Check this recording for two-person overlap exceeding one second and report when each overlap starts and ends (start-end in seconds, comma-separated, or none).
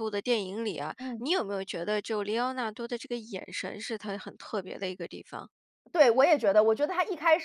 none